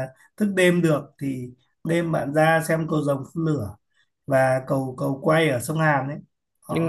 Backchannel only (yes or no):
yes